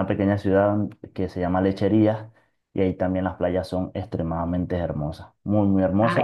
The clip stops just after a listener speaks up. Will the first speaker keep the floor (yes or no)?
yes